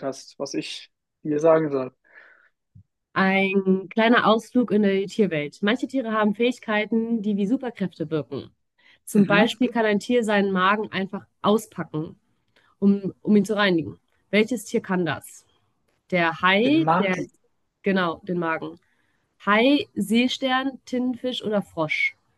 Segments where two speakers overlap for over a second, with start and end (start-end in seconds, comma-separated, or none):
none